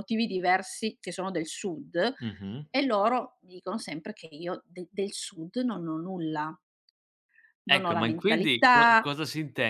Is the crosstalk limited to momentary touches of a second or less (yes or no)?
no